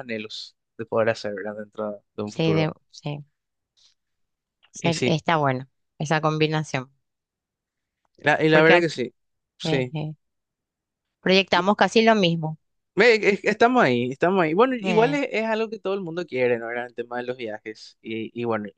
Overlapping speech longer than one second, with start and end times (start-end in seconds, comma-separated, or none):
none